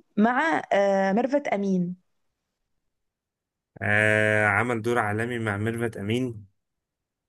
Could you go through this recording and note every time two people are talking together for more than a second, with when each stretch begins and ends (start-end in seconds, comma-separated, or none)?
none